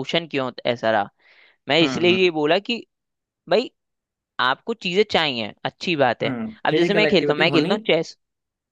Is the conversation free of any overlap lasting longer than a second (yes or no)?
no